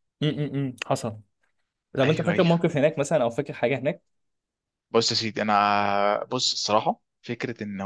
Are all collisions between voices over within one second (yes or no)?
yes